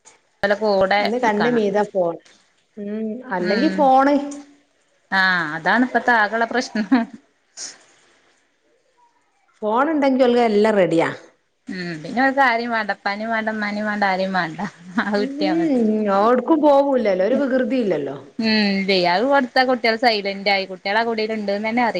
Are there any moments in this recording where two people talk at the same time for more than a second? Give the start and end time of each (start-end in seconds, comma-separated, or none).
none